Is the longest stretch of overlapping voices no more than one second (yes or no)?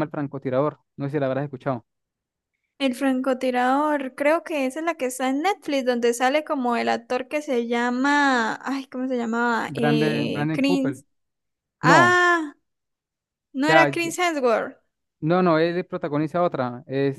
no